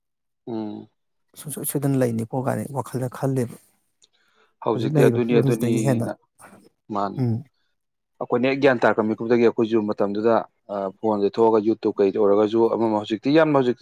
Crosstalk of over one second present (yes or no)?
yes